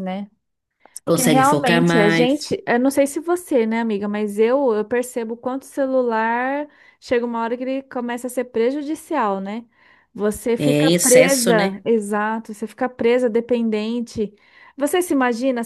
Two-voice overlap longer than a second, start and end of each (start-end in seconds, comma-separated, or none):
1.1-2.6, 10.6-11.8